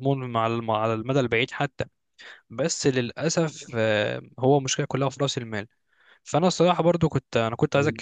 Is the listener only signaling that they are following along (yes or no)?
yes